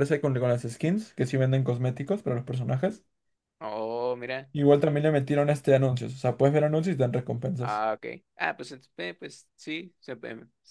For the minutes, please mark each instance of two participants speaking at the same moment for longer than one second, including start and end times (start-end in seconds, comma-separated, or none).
none